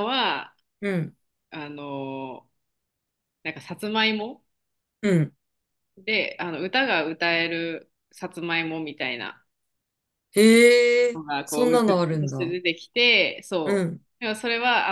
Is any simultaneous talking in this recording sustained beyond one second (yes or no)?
yes